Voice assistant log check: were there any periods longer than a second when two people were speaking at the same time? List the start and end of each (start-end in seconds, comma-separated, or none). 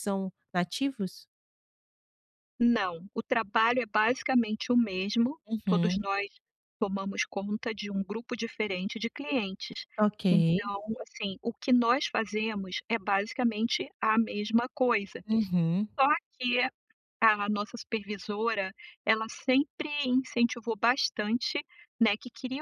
none